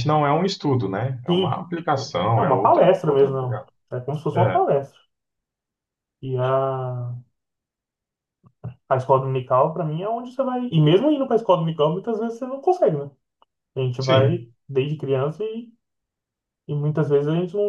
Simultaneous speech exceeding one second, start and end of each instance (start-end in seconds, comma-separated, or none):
2.4-3.7